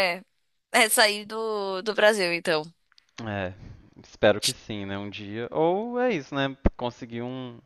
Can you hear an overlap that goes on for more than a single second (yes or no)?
no